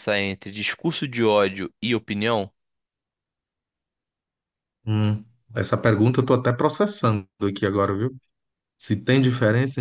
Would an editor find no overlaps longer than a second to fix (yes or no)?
yes